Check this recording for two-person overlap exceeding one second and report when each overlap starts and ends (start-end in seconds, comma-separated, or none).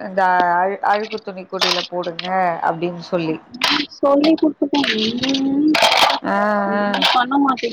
none